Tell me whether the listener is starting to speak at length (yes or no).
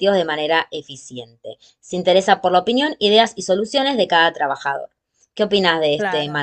yes